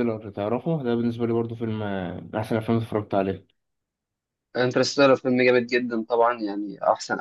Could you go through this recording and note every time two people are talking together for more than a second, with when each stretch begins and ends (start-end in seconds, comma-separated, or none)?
none